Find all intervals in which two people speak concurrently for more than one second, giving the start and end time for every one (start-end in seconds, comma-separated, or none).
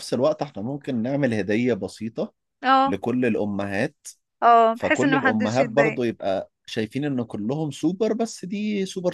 4.7-6.0